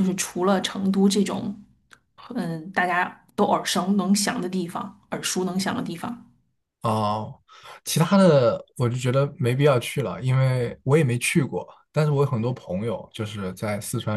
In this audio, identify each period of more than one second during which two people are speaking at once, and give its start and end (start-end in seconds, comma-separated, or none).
none